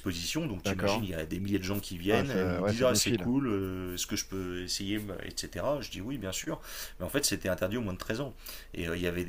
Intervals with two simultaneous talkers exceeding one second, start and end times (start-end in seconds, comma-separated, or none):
2.1-3.3